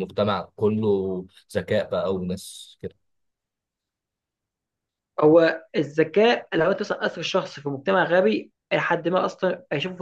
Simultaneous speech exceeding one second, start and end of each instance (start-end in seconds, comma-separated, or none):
none